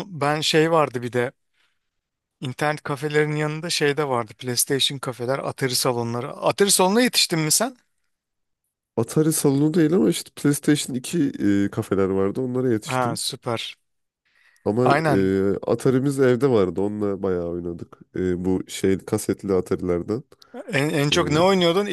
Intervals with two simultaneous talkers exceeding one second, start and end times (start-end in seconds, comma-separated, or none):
none